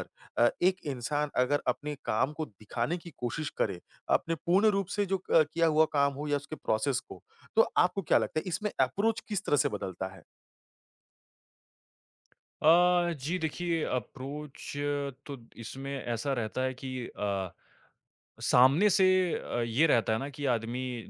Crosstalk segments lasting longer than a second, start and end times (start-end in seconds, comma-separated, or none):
none